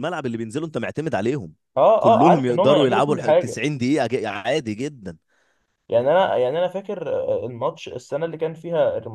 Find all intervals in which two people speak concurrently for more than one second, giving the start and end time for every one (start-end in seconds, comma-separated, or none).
2.0-3.6